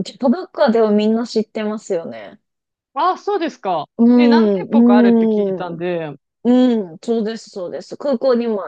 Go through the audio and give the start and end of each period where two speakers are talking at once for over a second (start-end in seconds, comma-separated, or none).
4.0-5.8